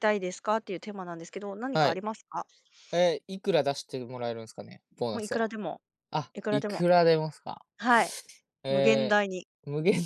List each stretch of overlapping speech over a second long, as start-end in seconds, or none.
none